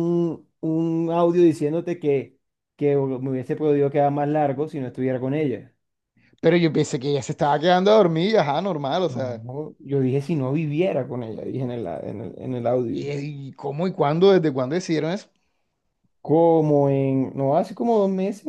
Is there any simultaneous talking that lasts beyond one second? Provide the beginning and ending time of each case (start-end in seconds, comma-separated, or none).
none